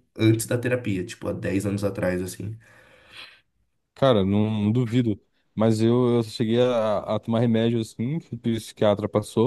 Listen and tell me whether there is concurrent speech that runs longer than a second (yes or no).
no